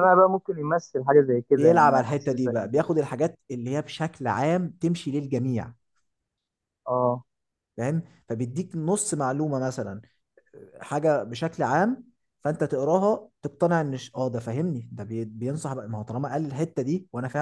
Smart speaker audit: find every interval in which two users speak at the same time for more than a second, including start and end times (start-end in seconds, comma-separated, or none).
1.6-2.9